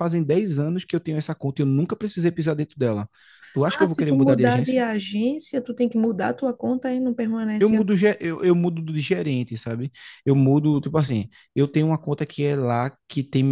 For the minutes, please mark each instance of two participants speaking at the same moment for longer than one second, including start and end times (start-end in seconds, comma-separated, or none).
3.6-4.8